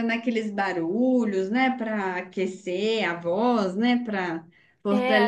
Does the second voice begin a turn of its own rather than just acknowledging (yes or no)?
yes